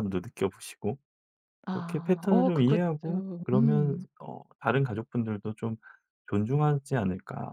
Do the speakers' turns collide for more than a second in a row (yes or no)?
yes